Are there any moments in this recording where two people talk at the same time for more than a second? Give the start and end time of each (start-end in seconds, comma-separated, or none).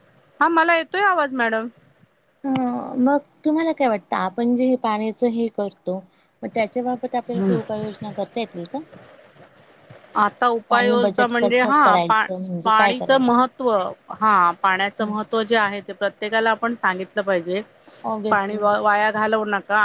10.7-13.6